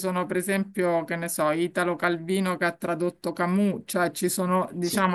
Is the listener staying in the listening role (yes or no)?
yes